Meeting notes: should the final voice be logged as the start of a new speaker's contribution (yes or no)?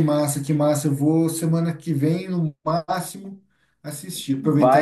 no